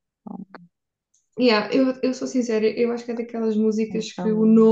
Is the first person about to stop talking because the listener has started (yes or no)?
no